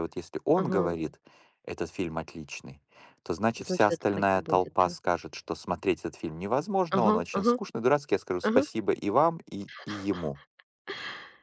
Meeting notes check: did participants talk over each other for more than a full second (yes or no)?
yes